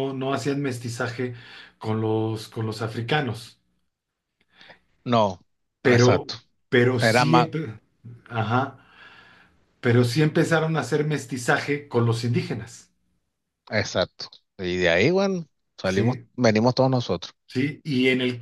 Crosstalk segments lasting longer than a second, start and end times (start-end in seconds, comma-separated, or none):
none